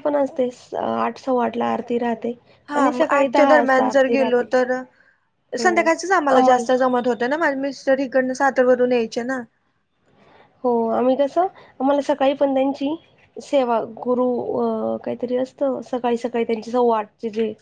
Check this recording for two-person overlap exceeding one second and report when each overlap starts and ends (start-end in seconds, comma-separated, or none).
2.8-4.5